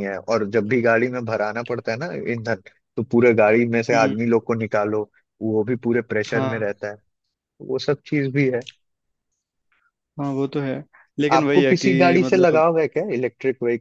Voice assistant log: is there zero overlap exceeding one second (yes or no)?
no